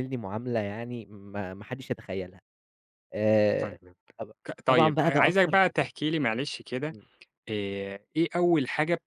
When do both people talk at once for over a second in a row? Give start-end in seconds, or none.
4.5-5.9